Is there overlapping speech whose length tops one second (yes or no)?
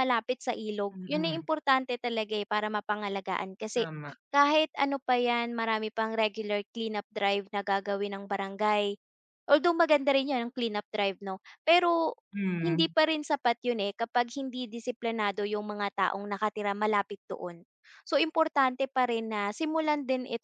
no